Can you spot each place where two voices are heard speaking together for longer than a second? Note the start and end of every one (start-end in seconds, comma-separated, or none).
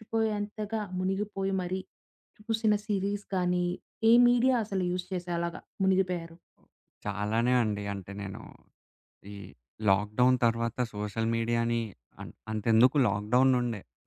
none